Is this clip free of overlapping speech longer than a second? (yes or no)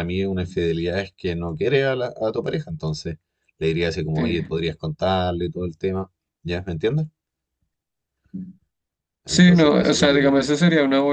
no